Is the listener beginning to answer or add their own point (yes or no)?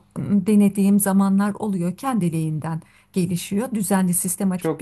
no